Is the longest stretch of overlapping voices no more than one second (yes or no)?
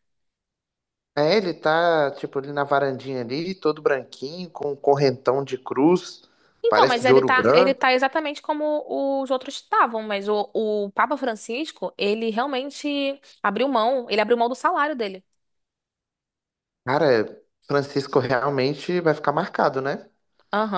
no